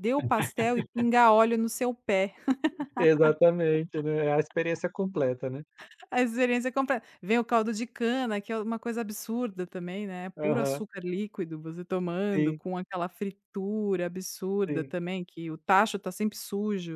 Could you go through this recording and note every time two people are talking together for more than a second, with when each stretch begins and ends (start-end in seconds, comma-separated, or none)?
none